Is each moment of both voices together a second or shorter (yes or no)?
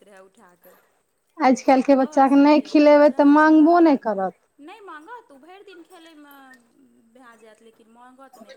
no